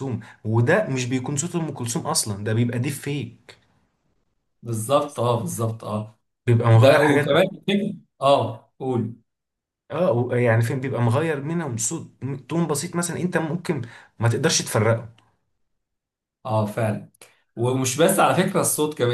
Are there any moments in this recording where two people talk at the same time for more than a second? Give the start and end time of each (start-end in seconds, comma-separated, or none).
none